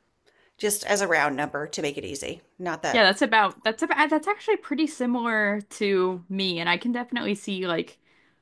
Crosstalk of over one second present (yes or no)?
no